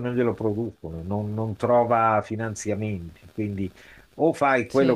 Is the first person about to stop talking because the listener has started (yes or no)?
no